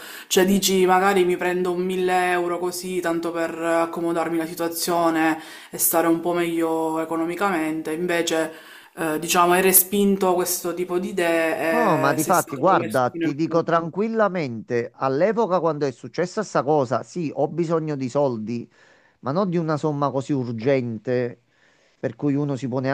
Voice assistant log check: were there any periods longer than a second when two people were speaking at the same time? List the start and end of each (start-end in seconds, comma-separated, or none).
11.7-13.9